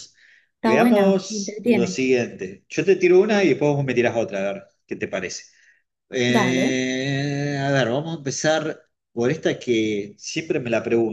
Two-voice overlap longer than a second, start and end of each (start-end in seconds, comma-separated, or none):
0.6-2.0